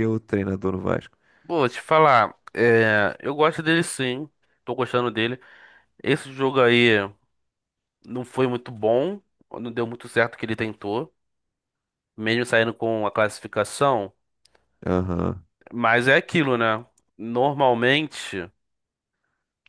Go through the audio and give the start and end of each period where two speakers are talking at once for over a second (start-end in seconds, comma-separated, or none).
none